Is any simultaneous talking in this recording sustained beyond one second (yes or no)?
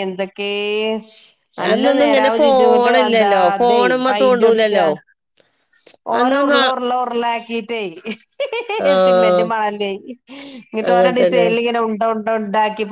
yes